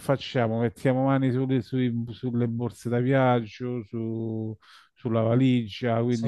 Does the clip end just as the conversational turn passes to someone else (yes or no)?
no